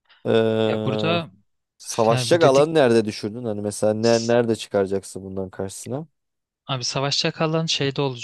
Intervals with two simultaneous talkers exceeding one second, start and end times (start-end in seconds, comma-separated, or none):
none